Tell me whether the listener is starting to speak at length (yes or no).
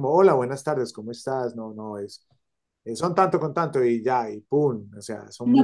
yes